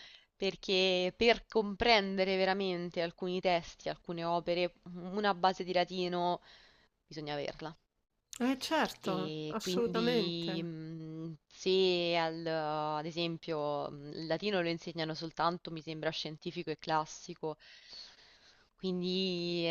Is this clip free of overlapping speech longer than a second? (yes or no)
no